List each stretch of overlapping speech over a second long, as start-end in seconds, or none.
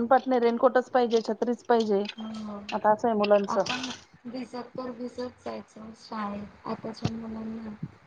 none